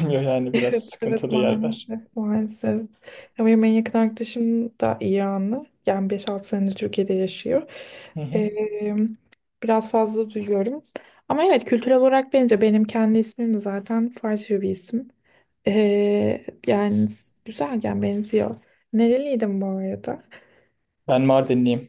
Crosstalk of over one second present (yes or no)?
yes